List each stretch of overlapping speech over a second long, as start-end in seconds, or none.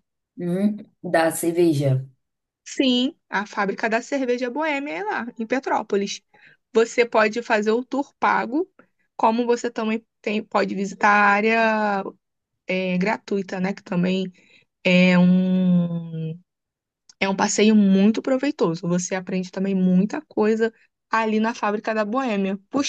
none